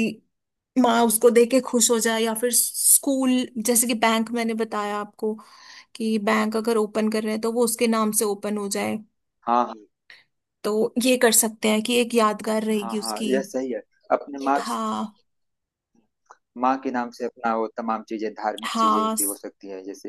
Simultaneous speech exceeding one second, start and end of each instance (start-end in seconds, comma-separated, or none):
none